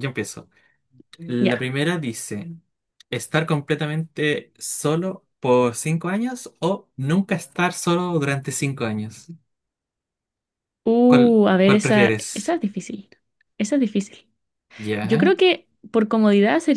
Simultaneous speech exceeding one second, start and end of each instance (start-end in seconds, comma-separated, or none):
11.1-12.6